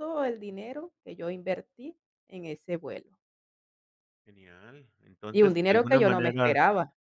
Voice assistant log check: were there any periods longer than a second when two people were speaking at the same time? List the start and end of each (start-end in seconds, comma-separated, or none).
5.3-6.5